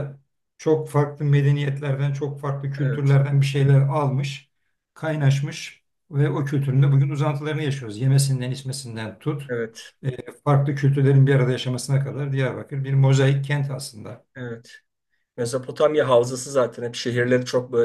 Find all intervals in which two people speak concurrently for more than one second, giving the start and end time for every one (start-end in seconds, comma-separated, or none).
none